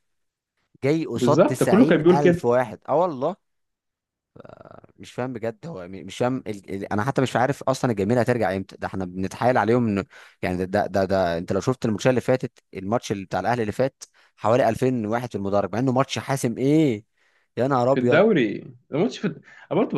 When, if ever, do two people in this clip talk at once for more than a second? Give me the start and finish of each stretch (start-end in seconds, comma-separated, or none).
1.1-2.6